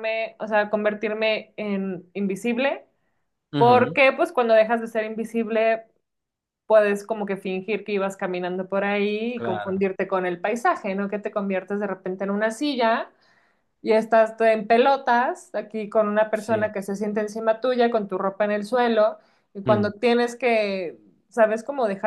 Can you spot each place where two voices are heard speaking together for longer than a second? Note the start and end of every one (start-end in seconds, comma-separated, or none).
none